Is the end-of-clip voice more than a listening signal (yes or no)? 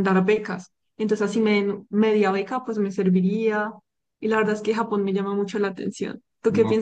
yes